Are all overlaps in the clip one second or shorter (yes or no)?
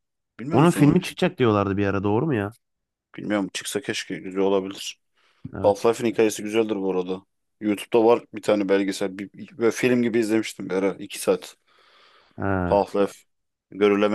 yes